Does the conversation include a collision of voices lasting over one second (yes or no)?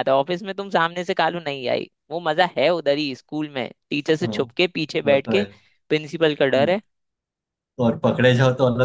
no